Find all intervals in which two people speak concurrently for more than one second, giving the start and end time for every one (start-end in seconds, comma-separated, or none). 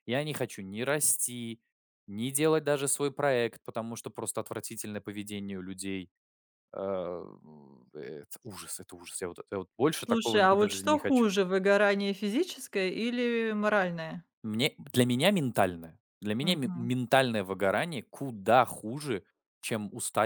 10.0-11.3